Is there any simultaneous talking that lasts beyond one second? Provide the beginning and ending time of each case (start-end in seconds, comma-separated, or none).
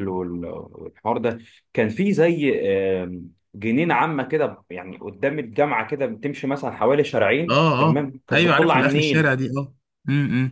7.5-9.3